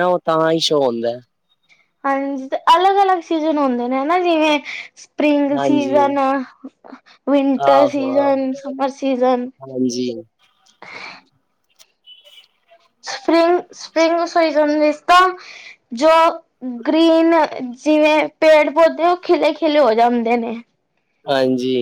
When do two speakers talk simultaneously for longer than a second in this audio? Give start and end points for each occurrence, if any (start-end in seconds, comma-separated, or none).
none